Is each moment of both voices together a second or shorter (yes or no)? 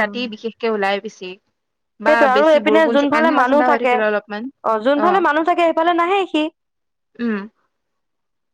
yes